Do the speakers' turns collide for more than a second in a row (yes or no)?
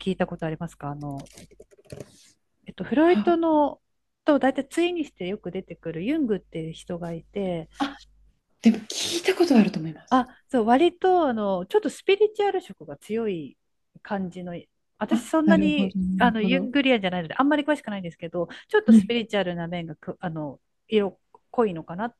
yes